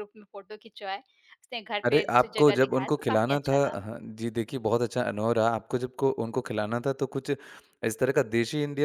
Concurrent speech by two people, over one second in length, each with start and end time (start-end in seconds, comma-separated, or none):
1.8-3.8